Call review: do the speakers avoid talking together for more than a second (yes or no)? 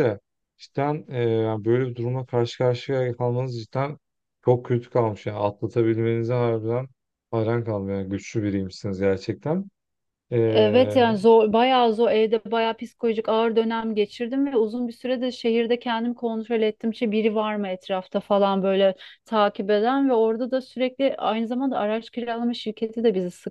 yes